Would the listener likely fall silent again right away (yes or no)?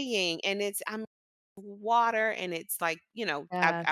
yes